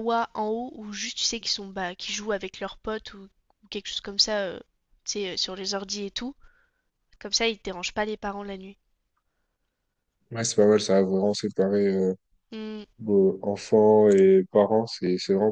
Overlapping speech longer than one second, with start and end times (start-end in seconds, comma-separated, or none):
none